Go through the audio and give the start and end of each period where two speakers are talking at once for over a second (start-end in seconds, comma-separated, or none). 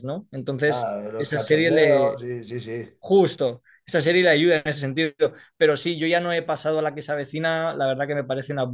0.6-2.2